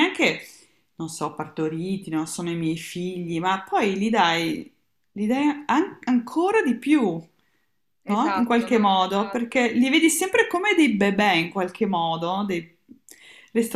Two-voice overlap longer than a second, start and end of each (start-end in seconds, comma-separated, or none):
8.0-9.7